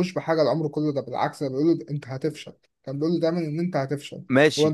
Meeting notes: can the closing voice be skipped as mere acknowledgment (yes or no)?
no